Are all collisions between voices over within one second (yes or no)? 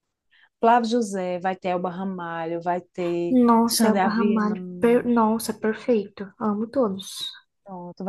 no